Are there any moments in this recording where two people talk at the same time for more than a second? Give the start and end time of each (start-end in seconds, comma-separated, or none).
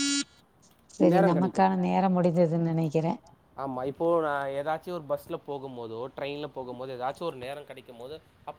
none